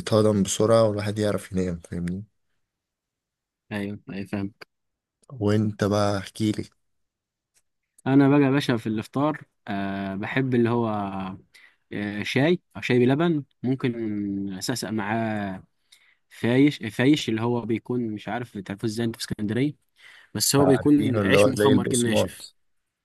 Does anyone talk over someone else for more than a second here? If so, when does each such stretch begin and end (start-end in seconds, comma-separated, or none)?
20.6-22.5